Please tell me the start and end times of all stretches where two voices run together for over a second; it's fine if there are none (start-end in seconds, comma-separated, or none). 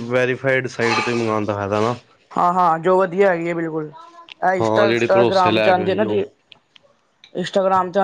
4.6-6.2